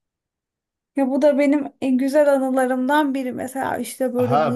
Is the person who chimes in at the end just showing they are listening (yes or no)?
no